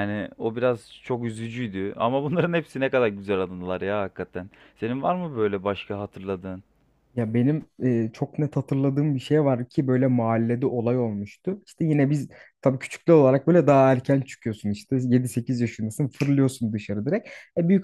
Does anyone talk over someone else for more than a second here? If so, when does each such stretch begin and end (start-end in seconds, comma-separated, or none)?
none